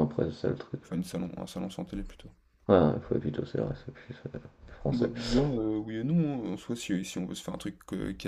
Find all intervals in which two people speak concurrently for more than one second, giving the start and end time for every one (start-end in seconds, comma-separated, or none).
none